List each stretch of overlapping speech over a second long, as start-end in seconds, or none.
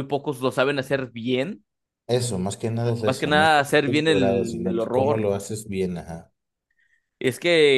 3.0-5.3